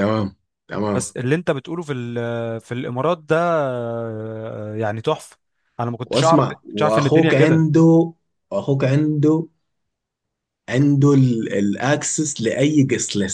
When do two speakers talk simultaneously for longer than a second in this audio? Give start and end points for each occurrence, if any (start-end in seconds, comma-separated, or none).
6.0-7.7